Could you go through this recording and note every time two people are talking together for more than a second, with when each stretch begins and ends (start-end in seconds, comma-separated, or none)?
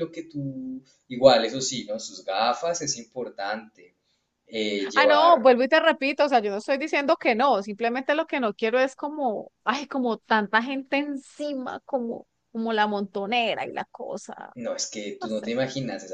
none